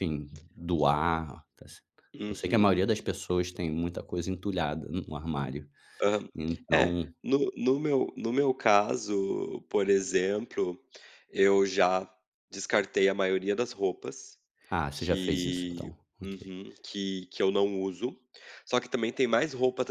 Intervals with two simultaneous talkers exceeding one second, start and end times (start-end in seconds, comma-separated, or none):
15.0-16.5